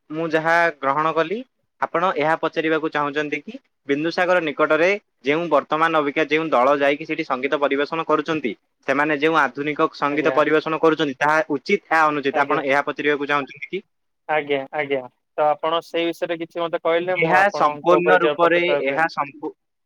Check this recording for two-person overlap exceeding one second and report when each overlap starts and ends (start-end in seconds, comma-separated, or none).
17.3-19.0